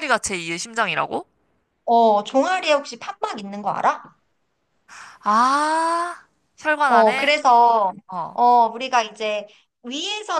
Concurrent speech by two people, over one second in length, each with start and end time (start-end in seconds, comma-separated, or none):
none